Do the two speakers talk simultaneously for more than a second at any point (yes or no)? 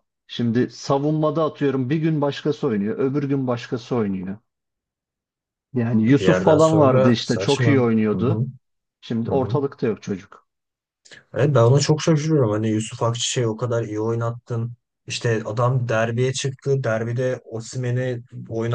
yes